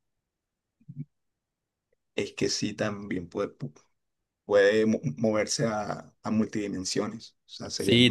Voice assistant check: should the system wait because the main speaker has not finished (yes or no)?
no